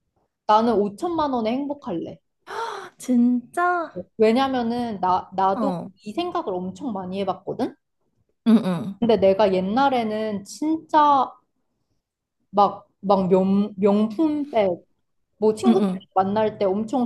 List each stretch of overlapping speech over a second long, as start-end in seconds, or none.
none